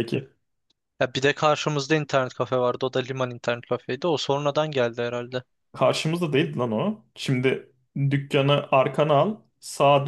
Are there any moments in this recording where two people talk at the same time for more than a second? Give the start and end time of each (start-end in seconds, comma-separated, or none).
none